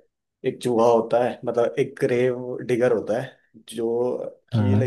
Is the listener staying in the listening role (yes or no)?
yes